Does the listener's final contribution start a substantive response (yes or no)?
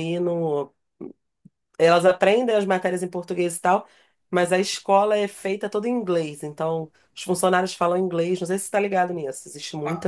yes